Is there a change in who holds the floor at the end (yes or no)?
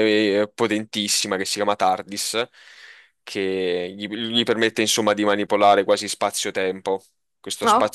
no